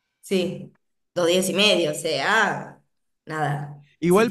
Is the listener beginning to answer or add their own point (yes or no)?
yes